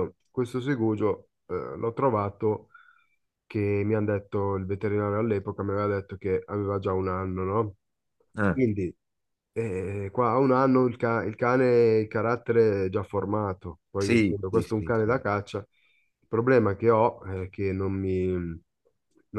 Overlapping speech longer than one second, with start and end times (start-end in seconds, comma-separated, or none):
14.0-15.2